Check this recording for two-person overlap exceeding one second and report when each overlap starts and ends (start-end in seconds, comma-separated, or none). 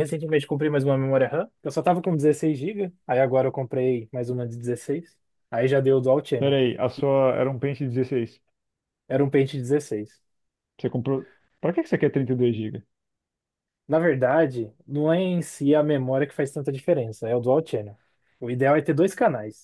none